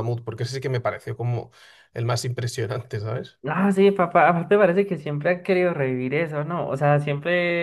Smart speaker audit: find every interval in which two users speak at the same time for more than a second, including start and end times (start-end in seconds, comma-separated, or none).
none